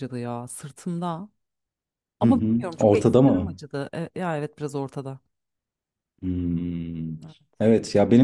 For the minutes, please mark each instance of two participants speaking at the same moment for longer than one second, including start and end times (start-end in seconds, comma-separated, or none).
2.2-3.6